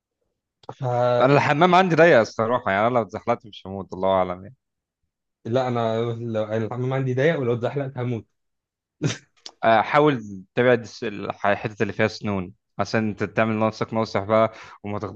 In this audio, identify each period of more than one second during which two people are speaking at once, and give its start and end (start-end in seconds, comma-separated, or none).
none